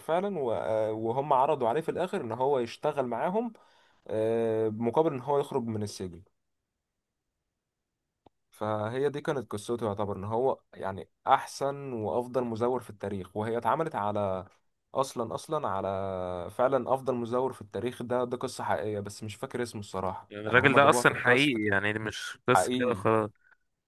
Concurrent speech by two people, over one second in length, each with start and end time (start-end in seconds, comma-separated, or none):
20.3-21.8